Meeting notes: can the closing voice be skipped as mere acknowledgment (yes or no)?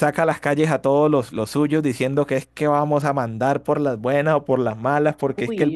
yes